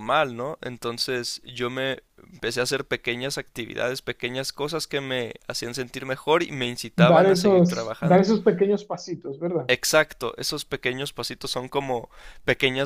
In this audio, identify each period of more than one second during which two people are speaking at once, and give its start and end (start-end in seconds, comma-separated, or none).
7.0-8.2